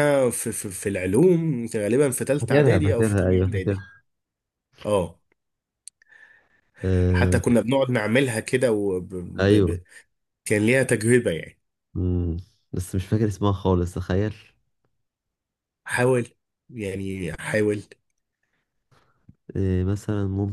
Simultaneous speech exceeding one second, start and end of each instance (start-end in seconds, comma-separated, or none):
2.4-3.9